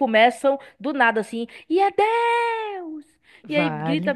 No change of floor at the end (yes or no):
yes